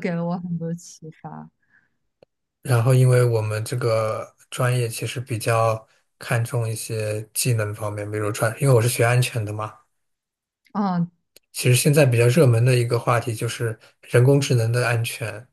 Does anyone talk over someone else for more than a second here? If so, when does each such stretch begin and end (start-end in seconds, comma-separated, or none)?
none